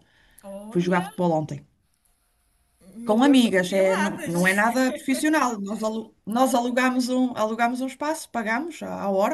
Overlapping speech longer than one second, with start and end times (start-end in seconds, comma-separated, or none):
3.1-4.7